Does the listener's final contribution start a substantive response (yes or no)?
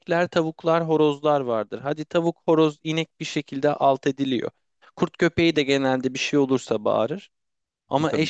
no